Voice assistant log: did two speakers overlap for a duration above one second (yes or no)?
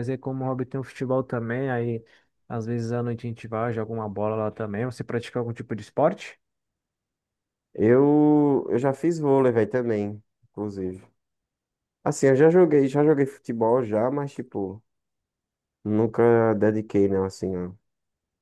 no